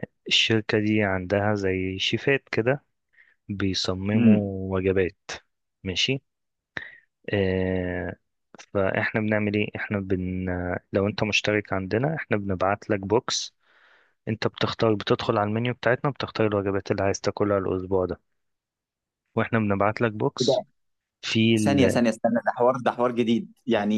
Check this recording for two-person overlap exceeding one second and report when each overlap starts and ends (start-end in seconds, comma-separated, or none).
none